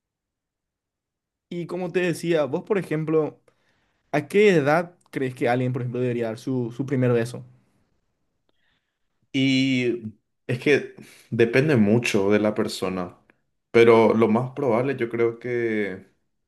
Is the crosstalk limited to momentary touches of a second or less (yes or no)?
yes